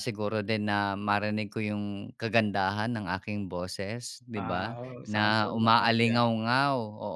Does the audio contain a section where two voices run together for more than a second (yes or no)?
yes